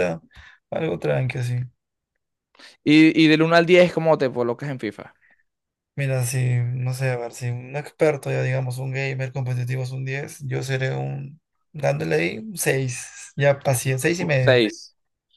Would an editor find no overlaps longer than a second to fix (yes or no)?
yes